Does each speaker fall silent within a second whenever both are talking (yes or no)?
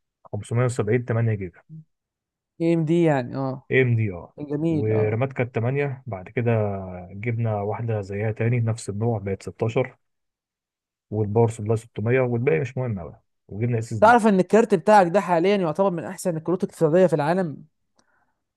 yes